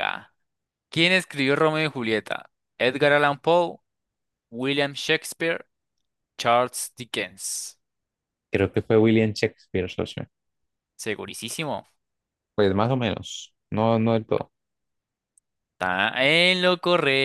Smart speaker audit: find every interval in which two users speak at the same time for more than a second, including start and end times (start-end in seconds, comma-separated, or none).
none